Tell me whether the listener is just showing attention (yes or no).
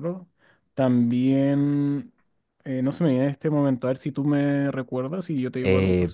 no